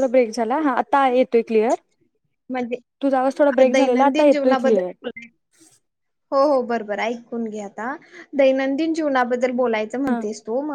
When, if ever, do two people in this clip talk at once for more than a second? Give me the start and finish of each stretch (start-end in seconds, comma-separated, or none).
3.6-4.9